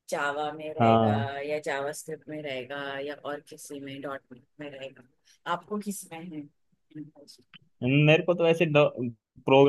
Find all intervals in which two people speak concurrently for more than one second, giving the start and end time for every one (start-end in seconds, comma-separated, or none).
none